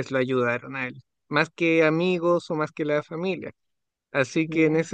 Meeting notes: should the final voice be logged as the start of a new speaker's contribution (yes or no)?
no